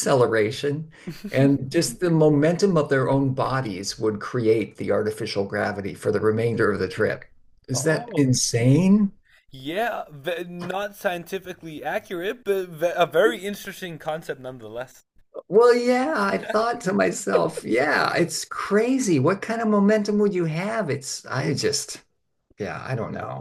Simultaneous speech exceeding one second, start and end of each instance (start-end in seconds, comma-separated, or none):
none